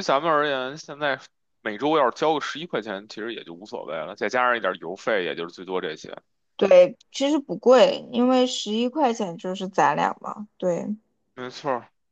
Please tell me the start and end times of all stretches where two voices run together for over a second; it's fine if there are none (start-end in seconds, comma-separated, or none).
none